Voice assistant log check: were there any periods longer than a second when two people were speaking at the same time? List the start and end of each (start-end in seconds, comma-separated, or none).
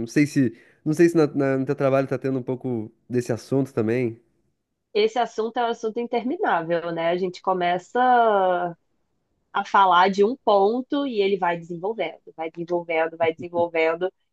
none